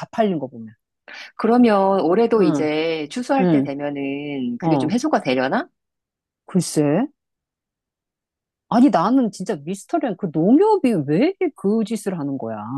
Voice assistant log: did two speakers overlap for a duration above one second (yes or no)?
no